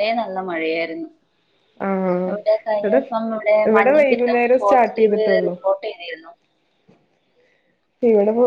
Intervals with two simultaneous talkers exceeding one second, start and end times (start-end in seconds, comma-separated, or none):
4.0-5.5